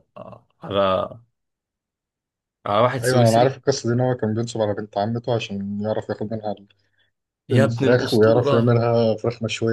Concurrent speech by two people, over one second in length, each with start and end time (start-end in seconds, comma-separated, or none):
7.5-8.8